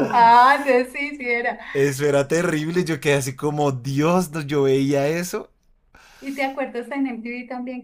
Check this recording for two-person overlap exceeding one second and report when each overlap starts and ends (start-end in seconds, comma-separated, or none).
none